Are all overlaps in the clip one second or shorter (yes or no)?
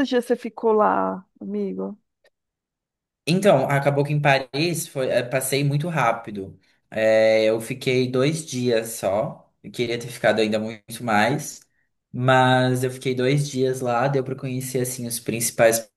yes